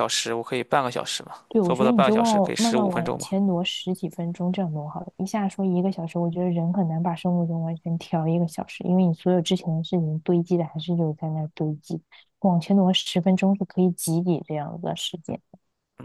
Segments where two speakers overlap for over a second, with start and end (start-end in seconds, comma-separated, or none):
1.5-3.3